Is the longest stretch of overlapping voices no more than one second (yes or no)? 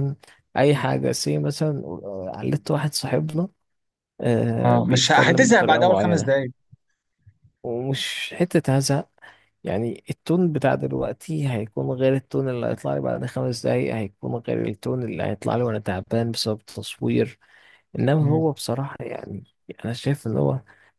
no